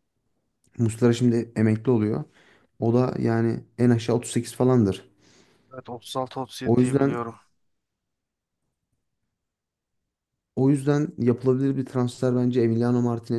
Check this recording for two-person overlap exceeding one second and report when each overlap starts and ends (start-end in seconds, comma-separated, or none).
none